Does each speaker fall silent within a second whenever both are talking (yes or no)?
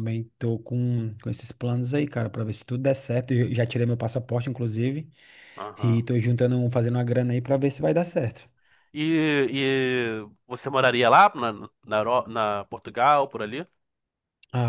yes